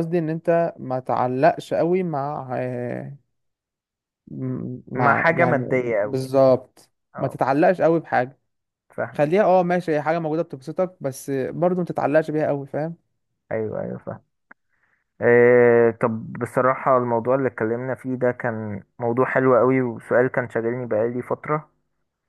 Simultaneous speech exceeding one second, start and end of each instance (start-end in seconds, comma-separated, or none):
5.0-6.3